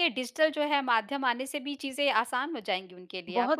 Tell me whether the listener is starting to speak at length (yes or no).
yes